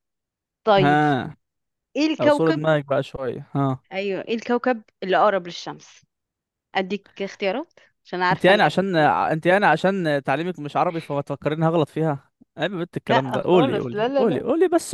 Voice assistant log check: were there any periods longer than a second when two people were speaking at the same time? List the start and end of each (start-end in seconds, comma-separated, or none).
13.1-14.4